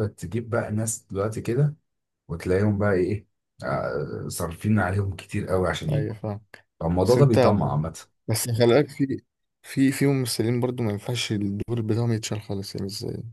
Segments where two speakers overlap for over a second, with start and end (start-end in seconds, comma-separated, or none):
none